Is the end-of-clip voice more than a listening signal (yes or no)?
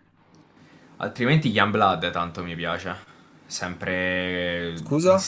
no